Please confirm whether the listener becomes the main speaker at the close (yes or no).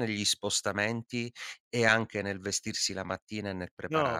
yes